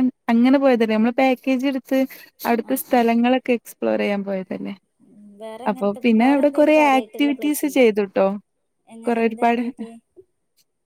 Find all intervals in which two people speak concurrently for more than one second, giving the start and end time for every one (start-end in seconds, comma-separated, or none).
5.7-7.8